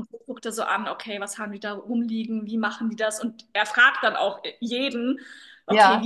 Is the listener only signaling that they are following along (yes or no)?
yes